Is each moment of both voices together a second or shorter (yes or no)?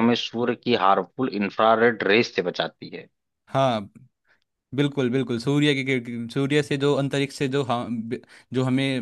yes